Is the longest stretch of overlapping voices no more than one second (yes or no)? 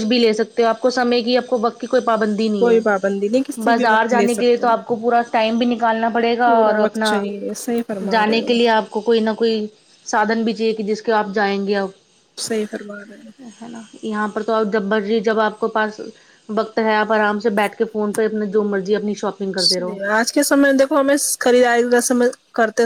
no